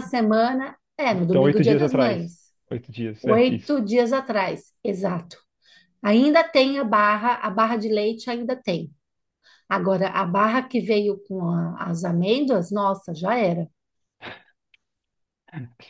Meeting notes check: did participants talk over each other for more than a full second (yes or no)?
yes